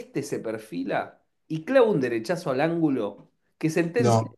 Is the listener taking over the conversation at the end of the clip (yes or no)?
no